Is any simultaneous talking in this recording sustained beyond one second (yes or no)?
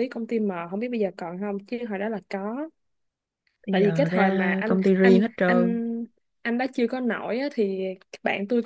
yes